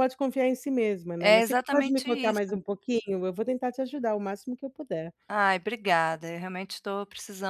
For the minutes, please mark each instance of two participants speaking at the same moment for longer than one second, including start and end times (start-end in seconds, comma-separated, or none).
1.2-2.4